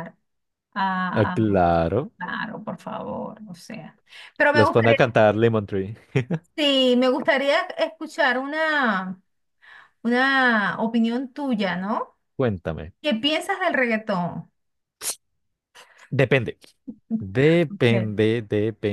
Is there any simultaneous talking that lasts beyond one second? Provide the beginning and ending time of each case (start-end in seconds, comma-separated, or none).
none